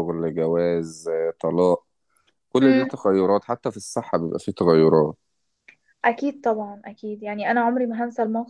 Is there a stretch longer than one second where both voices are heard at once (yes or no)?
no